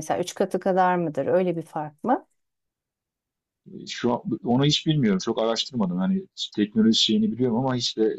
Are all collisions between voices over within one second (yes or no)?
yes